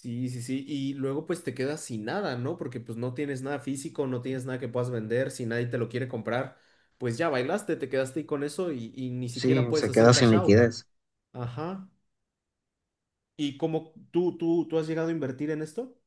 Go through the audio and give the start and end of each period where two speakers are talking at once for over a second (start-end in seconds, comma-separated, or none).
9.3-10.6